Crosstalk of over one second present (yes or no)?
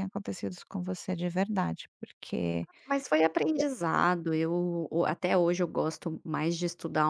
no